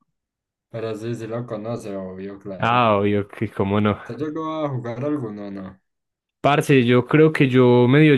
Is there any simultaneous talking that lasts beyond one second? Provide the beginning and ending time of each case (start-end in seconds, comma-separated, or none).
none